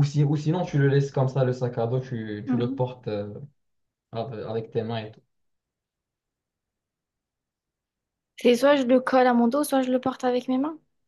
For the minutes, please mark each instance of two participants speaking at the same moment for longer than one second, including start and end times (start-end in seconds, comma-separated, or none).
none